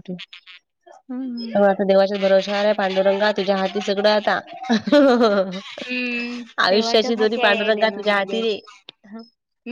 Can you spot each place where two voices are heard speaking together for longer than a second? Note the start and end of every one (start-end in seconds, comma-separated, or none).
6.6-8.6